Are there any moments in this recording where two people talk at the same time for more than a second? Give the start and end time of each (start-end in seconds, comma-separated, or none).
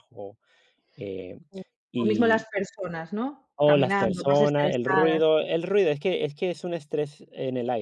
3.5-5.2